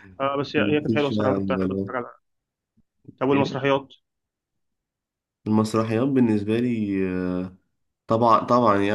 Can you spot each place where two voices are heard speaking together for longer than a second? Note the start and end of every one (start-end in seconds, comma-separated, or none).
0.6-1.9